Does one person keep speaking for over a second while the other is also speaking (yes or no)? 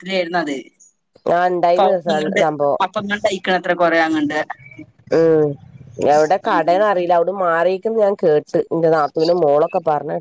no